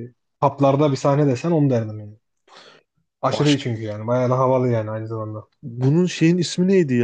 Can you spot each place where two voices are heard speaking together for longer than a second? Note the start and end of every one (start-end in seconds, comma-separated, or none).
none